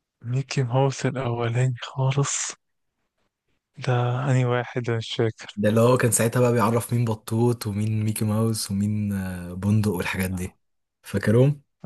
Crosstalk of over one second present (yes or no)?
no